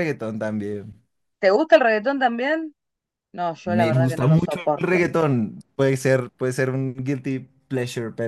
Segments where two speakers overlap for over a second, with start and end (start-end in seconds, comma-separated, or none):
3.6-5.1